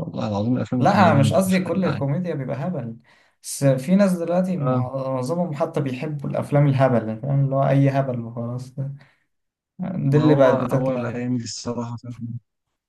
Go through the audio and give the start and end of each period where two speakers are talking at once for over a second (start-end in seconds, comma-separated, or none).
0.8-2.0, 10.1-11.4